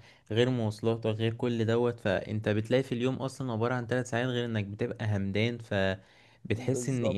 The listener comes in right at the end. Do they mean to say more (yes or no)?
no